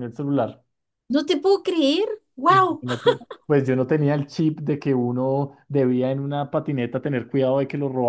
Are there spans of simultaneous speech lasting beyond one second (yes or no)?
no